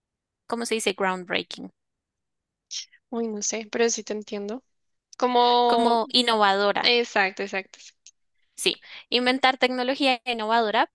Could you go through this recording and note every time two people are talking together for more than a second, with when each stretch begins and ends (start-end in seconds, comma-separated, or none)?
none